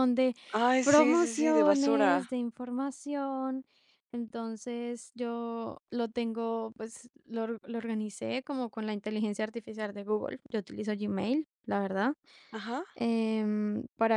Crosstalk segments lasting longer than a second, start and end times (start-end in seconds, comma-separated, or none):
0.8-2.2